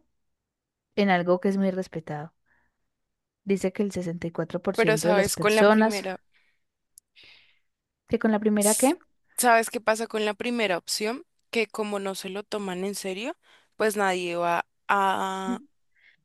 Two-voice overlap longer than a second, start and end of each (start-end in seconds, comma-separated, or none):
4.8-6.0